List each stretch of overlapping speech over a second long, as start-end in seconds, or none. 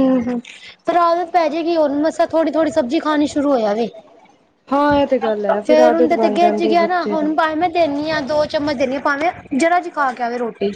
5.7-7.3